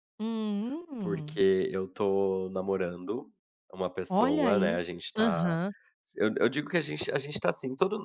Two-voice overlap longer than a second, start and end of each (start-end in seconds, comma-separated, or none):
4.1-5.6